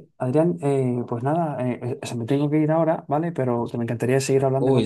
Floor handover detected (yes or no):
yes